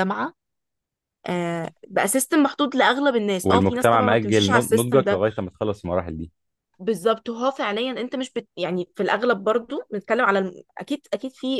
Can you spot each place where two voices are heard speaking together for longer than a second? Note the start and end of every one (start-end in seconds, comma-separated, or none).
3.5-5.2